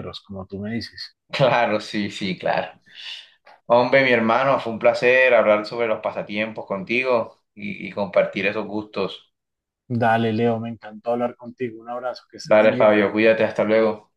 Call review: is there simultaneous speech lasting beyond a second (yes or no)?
no